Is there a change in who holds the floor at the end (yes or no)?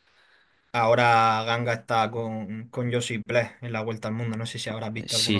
yes